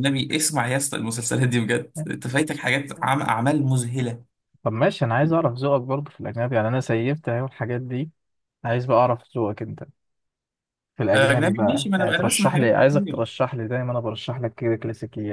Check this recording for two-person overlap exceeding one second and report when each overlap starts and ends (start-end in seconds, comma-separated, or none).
11.1-13.2